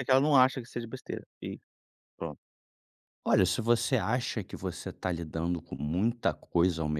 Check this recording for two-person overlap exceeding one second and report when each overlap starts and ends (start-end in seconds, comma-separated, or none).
none